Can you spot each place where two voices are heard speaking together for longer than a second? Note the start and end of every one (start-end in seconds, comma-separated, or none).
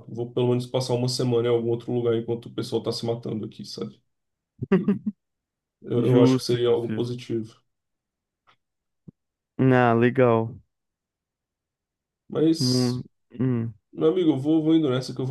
6.0-7.2